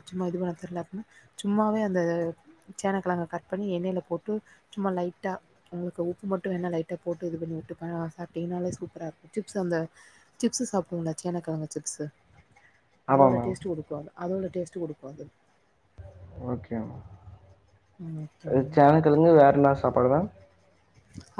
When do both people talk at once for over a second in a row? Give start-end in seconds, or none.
none